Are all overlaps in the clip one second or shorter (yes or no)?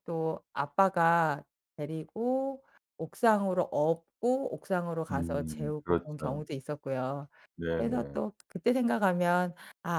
no